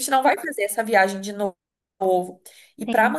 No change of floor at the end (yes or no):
yes